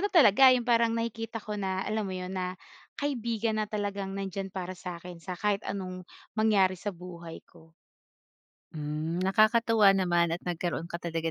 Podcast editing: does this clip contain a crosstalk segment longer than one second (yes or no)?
no